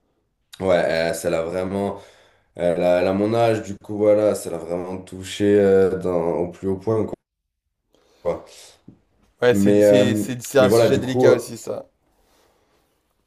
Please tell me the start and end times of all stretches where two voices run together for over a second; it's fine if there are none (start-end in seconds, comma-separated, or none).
9.5-11.5